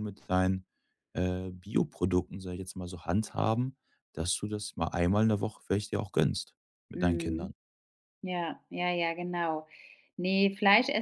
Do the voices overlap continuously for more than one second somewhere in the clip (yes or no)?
no